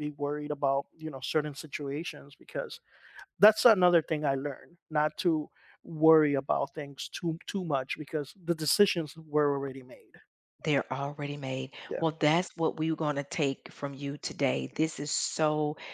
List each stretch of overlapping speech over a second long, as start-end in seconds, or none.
none